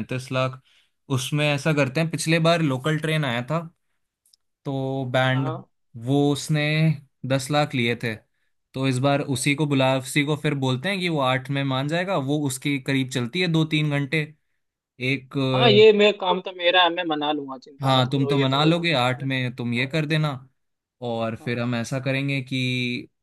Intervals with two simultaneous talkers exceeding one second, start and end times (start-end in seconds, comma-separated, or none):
17.8-19.2